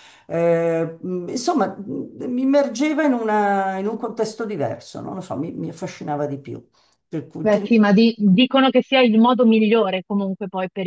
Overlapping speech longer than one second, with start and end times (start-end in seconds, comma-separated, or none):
none